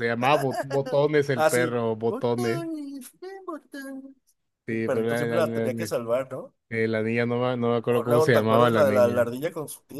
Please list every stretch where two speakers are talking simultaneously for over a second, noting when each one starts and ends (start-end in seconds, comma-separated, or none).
1.3-2.6, 4.7-5.9, 7.9-9.3